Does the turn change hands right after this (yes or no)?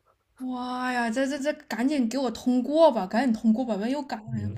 yes